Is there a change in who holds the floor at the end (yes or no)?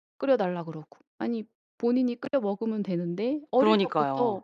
no